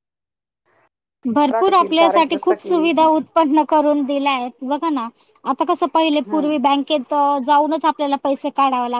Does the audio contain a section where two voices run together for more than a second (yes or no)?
yes